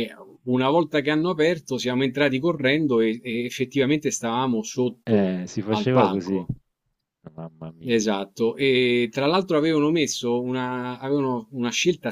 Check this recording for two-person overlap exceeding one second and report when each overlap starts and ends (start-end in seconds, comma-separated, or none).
5.0-6.4